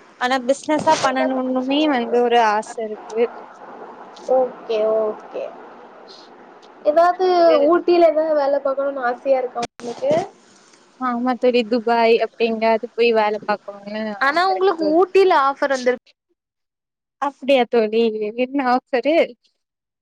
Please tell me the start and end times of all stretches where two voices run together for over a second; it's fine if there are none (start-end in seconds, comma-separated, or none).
none